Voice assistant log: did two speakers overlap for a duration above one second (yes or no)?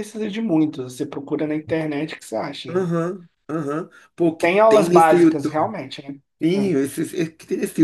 yes